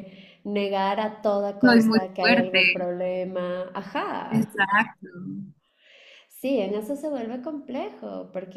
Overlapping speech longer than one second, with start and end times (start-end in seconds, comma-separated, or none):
1.6-2.9